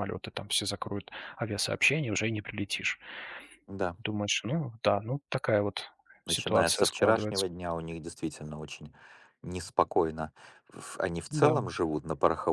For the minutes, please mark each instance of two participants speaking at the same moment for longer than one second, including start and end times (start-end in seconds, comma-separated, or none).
6.3-7.5